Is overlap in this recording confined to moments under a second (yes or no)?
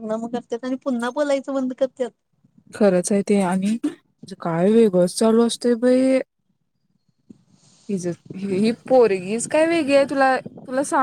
yes